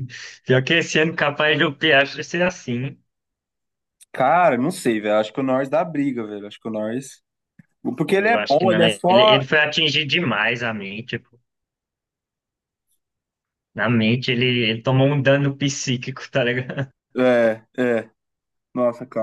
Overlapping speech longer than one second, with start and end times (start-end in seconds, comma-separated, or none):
8.1-9.4